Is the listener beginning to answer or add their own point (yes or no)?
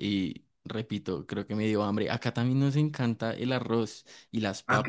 no